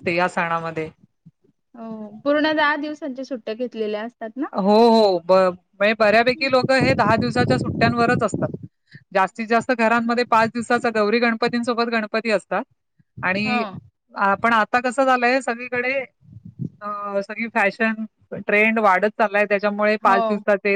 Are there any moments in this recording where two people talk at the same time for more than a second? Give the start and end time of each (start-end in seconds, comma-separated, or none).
none